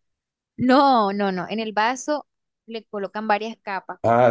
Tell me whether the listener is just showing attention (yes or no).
no